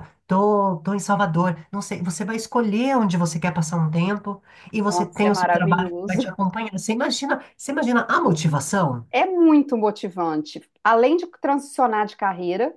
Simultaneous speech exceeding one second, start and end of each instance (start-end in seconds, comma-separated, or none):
4.9-6.2